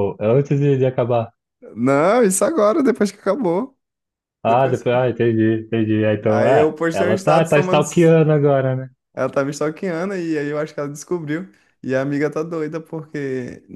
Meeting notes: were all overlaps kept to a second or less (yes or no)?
no